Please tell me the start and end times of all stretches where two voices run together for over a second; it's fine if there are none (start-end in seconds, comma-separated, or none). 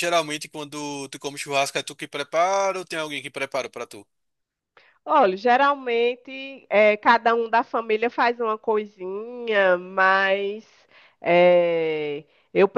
none